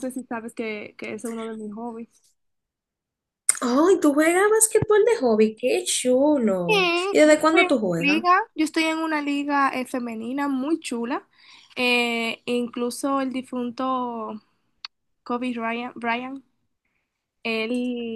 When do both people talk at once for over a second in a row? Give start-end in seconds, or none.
6.7-8.2